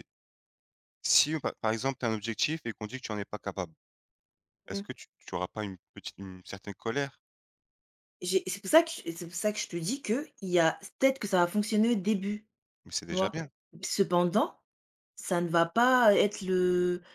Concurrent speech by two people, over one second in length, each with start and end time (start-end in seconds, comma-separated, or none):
none